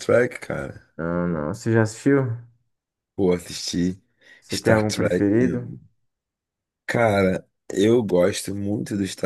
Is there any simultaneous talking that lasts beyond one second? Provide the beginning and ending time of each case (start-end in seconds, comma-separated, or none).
4.5-5.7